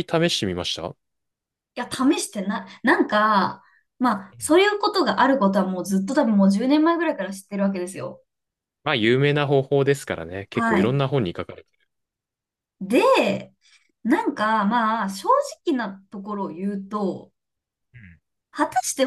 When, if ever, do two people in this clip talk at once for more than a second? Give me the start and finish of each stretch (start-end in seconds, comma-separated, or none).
none